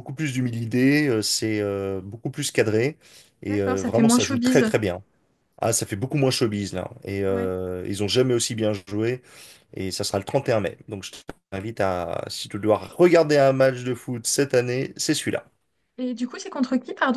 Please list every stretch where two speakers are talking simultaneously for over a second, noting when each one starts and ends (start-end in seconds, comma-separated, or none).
3.5-4.7